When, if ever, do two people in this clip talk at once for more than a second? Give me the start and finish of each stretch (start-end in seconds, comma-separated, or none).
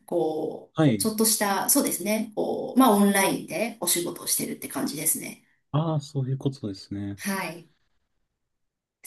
none